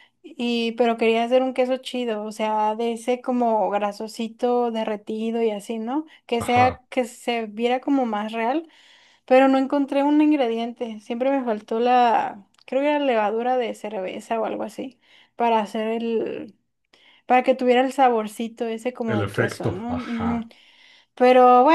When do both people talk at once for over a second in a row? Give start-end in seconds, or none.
19.1-20.5